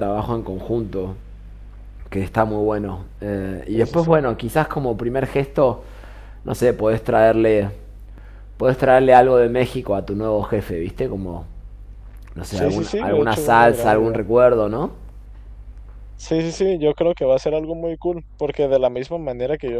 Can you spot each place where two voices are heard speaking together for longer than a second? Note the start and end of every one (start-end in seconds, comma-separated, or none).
12.5-14.2